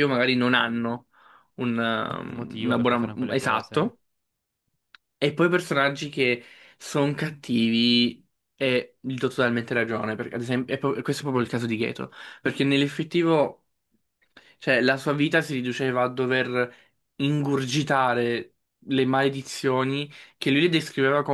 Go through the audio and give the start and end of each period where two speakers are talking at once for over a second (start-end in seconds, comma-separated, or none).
2.3-3.9